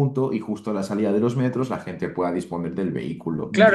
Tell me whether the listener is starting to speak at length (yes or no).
yes